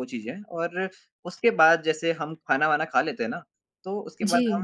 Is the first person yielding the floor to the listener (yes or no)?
no